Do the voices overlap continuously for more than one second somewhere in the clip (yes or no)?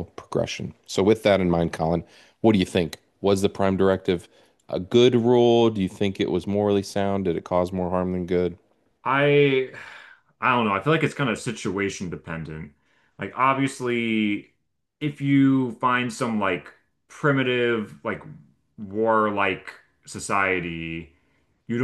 no